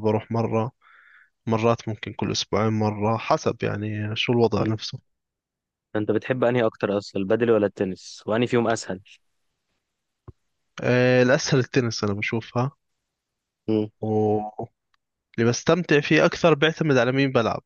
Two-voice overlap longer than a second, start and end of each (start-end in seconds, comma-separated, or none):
none